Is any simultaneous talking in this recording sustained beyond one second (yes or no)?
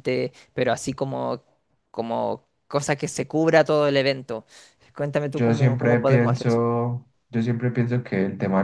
yes